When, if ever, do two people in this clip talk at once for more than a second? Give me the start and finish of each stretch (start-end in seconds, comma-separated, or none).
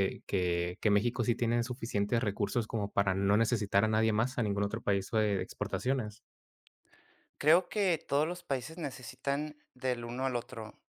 none